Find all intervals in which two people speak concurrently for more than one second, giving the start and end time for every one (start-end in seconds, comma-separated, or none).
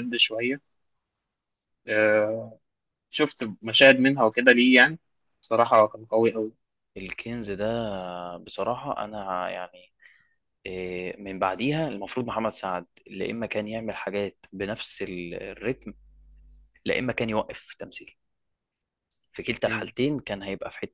none